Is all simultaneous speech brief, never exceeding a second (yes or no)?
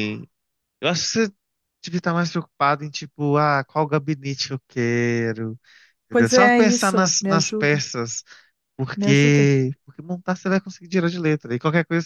no